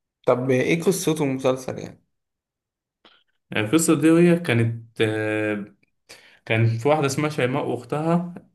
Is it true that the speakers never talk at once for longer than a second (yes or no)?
yes